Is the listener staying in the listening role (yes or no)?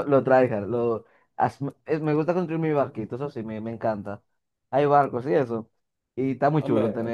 no